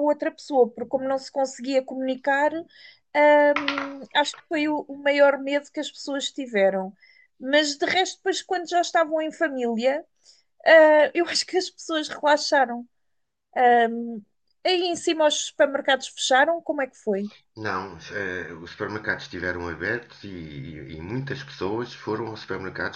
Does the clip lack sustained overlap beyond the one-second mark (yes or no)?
yes